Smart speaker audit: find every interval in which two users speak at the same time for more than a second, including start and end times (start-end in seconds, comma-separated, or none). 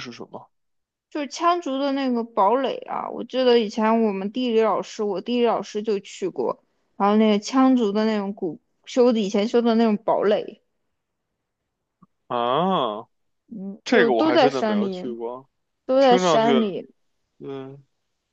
13.8-15.2